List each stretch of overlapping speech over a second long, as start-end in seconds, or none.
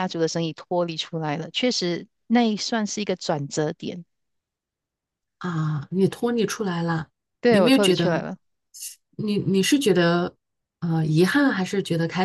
none